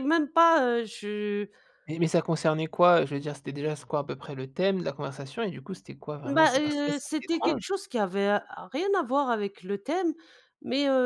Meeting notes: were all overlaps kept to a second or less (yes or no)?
no